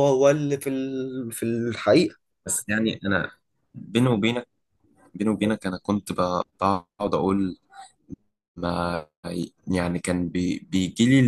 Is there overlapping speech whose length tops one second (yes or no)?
no